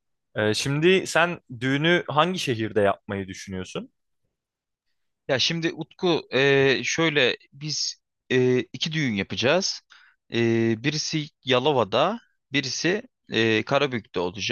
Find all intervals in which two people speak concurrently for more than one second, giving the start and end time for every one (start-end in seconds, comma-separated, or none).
none